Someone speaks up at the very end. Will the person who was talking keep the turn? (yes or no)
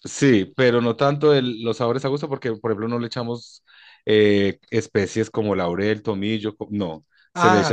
yes